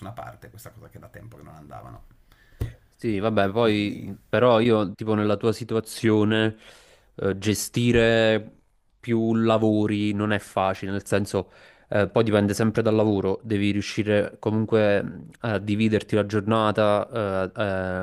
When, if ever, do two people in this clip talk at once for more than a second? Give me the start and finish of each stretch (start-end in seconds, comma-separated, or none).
none